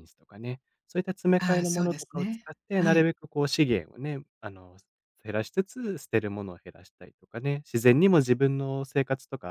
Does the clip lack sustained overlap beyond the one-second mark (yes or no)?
no